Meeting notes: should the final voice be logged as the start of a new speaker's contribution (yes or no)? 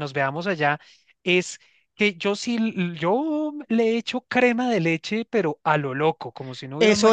yes